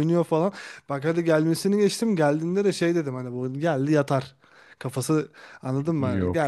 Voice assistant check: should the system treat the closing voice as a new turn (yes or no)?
no